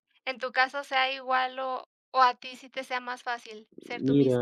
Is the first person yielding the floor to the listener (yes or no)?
yes